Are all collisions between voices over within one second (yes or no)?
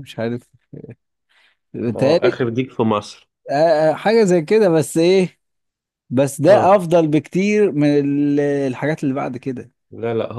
yes